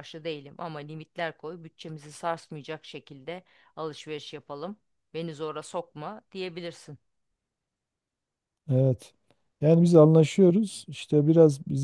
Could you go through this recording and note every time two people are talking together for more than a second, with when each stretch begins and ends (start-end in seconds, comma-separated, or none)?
none